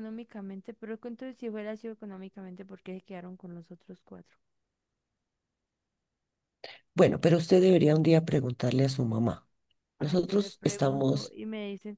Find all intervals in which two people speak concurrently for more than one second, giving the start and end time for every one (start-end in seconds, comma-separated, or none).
10.0-11.3